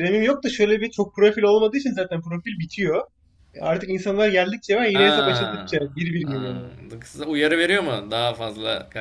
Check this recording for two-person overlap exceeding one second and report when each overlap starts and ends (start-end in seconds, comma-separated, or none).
4.9-6.6